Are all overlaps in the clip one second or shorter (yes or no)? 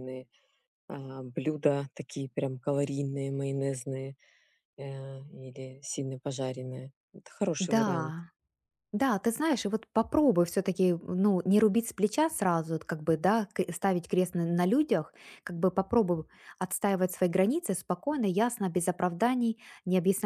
yes